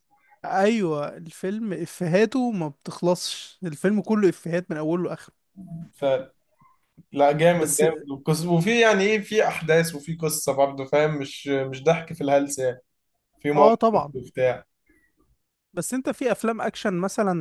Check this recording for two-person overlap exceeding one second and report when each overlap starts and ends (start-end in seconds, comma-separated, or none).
none